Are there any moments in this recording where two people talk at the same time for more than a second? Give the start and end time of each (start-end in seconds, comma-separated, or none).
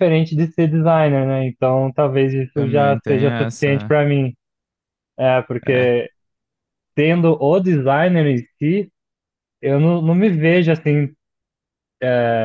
2.5-3.9